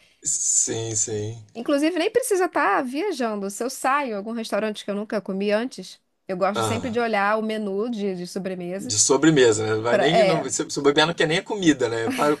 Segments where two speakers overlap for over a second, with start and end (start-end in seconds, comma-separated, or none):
none